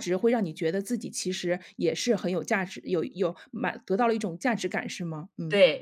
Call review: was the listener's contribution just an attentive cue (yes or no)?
no